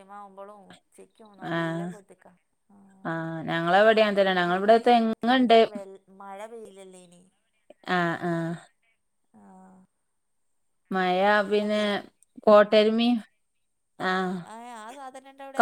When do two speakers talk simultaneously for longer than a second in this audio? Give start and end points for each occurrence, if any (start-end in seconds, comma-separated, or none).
none